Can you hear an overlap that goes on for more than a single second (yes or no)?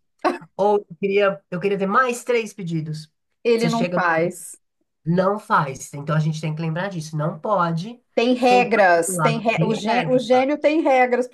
yes